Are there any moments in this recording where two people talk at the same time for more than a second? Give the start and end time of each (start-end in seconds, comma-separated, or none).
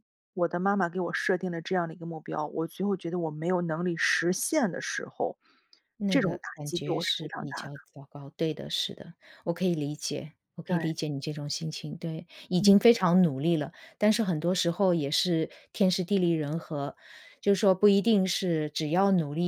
6.1-7.7